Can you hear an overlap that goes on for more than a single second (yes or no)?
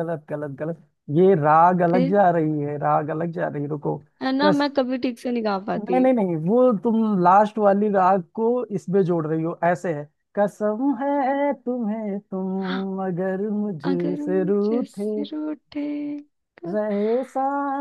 yes